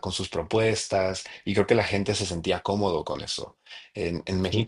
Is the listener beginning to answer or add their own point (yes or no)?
no